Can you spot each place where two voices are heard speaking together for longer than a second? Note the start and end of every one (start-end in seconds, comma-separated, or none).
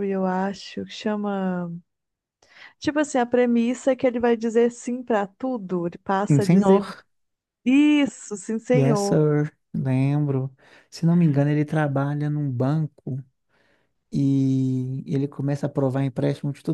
none